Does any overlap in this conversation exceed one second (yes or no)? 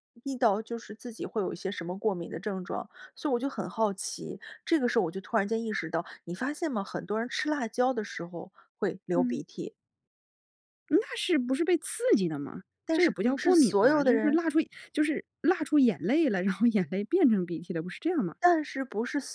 yes